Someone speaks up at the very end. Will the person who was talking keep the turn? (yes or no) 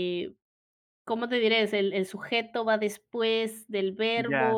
no